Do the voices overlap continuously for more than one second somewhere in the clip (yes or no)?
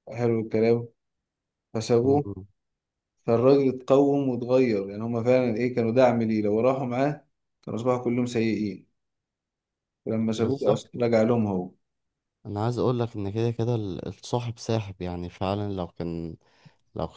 no